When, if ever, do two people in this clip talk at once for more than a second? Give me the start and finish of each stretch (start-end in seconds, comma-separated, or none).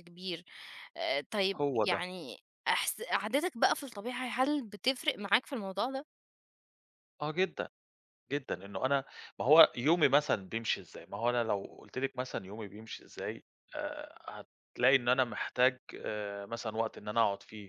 none